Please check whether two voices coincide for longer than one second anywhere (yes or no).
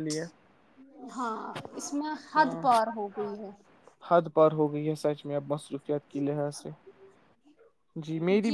no